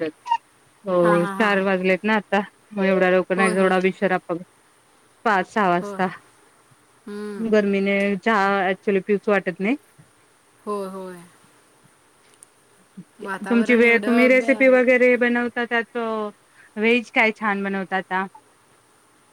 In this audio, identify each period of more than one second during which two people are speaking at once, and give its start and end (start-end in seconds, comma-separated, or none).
13.5-14.8